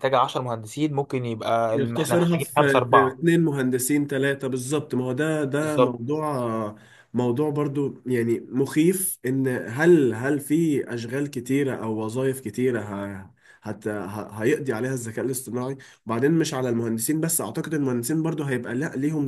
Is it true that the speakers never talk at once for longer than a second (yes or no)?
no